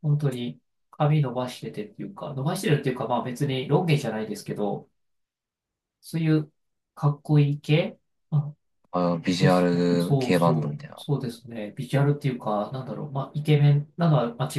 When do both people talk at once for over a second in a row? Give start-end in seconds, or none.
9.4-11.0